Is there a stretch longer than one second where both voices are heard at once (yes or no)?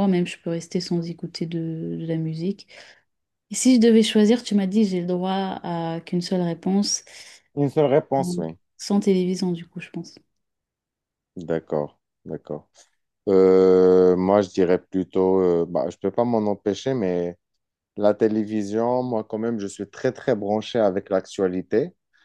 no